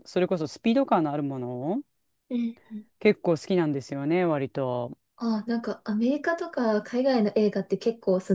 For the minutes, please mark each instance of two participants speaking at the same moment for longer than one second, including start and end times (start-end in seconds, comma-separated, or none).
none